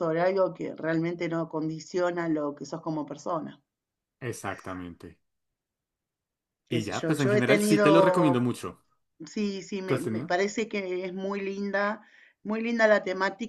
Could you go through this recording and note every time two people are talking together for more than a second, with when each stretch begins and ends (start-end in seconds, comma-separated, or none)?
6.7-8.4